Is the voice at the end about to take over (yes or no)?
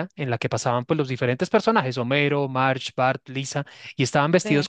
no